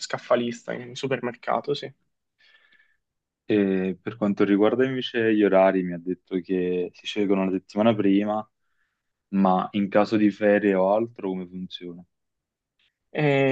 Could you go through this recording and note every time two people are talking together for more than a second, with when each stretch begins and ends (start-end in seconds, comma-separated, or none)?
none